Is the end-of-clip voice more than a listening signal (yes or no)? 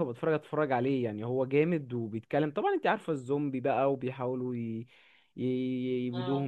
no